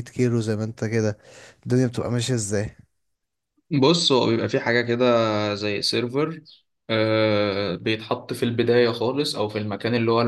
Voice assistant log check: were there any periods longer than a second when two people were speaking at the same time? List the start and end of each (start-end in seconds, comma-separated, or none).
none